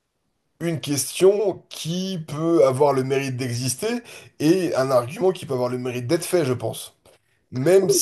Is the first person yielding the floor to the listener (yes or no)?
yes